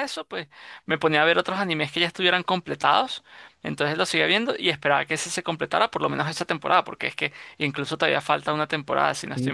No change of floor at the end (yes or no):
no